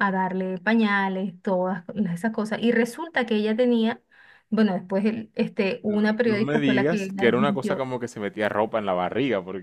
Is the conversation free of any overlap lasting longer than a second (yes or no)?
no